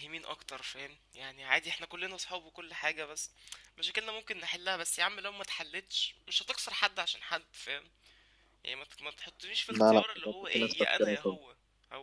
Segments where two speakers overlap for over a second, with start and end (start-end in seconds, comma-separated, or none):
9.7-11.4